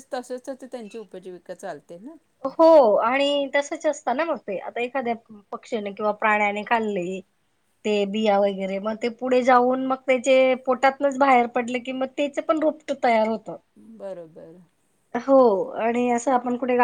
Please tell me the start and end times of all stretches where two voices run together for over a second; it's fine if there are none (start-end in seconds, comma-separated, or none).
none